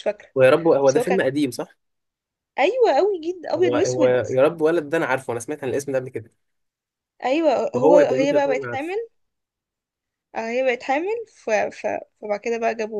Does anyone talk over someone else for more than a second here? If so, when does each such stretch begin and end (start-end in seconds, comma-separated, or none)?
7.7-8.9